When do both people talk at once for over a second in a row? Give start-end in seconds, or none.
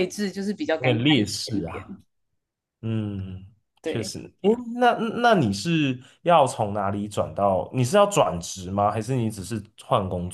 0.8-2.0